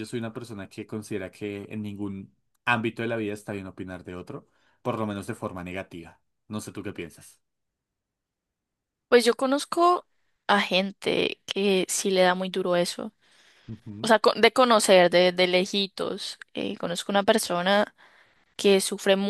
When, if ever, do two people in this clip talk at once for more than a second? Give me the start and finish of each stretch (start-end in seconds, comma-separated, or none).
none